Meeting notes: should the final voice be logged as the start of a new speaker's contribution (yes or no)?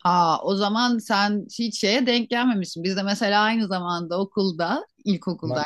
no